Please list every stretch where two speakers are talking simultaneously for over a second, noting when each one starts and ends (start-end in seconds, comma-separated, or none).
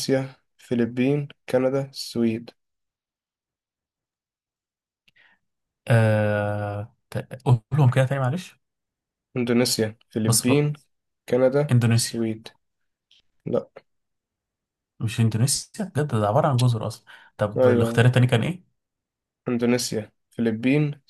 none